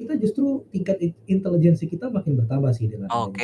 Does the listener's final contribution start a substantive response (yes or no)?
yes